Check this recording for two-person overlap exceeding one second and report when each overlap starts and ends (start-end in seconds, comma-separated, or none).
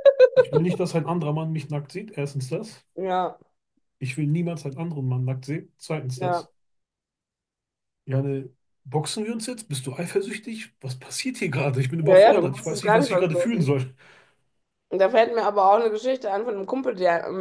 12.1-13.7